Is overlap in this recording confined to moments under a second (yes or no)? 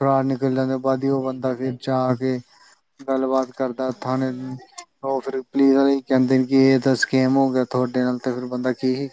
no